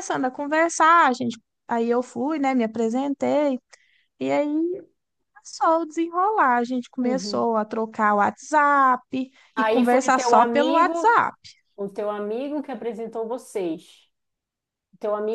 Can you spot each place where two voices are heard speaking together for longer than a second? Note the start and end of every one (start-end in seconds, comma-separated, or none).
9.5-11.2